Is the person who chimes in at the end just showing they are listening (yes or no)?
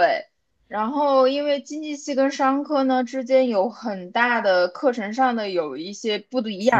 yes